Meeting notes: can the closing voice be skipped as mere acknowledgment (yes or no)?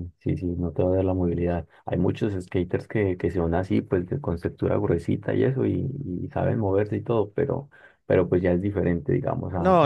no